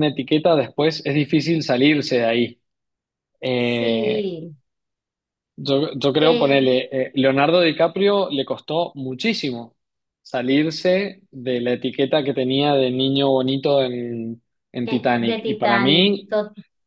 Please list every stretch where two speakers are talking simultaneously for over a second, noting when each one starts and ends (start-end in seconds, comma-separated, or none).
14.8-16.4